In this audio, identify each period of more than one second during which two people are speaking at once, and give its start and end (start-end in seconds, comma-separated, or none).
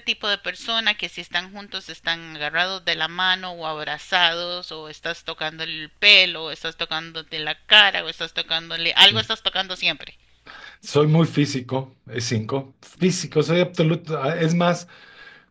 none